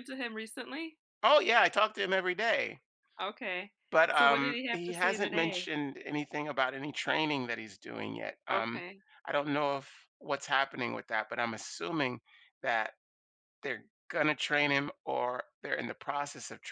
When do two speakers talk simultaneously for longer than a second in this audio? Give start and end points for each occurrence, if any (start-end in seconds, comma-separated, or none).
4.1-5.7